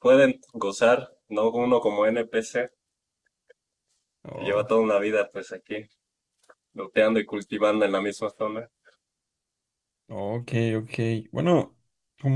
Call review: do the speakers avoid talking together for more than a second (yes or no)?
yes